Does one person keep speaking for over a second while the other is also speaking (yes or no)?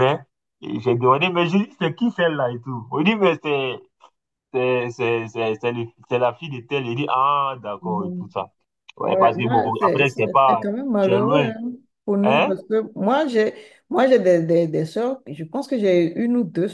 yes